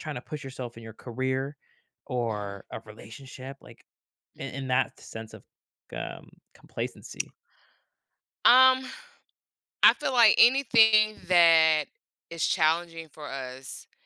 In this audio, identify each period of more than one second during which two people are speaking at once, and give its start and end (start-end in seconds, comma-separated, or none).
none